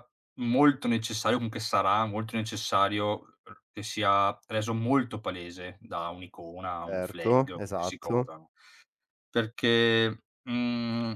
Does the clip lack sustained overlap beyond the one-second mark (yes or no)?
no